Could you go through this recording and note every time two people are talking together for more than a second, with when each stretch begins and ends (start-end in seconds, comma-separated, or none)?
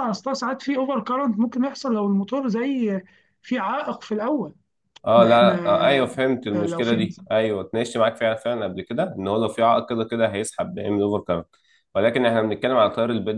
none